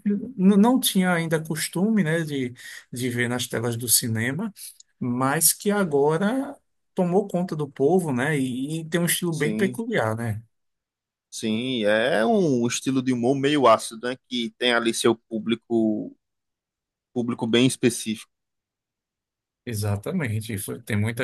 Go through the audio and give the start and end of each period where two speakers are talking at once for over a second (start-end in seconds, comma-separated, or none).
none